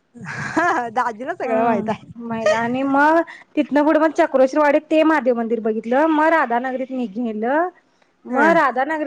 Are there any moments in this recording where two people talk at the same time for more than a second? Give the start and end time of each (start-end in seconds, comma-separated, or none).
none